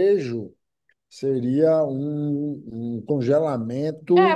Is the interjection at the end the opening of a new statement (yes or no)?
yes